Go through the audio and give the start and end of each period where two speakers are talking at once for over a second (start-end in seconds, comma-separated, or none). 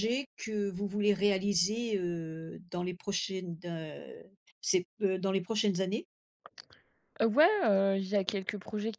none